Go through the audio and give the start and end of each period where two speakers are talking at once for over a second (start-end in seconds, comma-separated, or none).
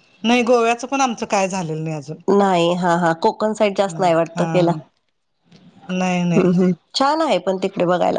none